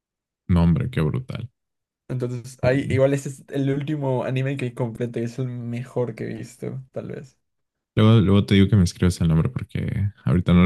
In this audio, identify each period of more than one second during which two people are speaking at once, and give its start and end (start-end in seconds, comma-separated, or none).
none